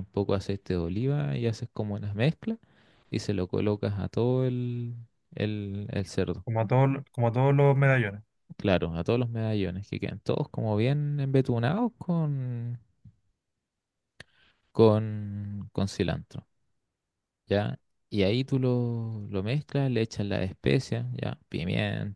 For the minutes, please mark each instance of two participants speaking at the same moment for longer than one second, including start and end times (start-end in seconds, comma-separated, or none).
none